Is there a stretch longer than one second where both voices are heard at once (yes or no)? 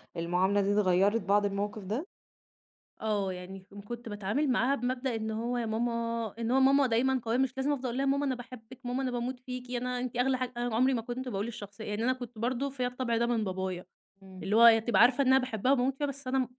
no